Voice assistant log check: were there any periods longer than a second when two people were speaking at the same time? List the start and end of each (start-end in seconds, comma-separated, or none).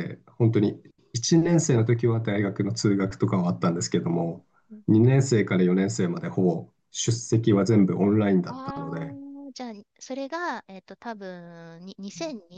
none